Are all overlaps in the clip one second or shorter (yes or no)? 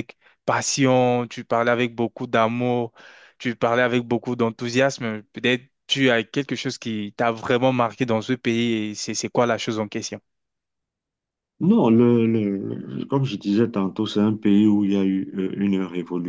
yes